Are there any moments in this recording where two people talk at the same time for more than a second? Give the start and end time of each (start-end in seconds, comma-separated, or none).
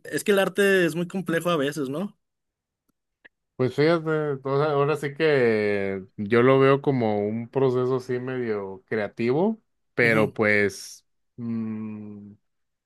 none